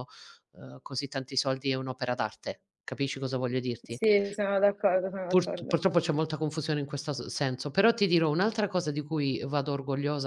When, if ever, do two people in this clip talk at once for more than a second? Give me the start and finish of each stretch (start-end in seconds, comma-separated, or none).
none